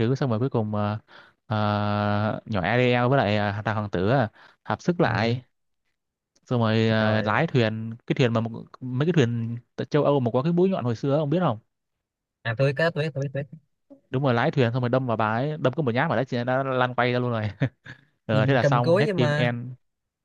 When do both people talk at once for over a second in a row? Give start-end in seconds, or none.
18.3-19.6